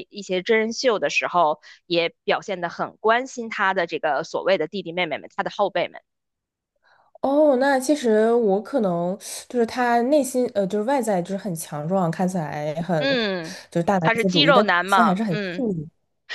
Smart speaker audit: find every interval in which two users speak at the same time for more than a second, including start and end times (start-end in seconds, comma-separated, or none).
14.0-15.7